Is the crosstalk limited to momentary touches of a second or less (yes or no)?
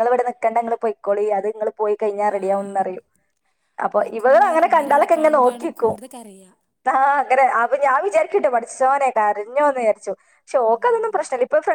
no